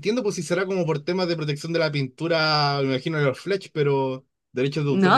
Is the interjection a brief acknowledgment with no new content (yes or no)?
no